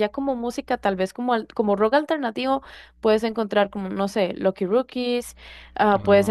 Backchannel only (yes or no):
yes